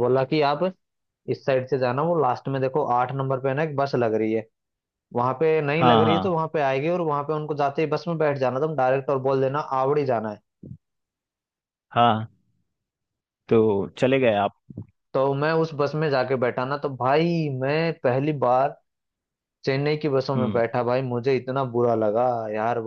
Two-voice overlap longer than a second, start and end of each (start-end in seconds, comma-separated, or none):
none